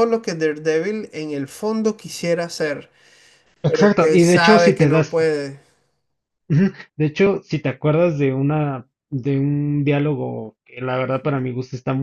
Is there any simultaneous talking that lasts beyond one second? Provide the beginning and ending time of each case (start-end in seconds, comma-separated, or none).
3.6-5.2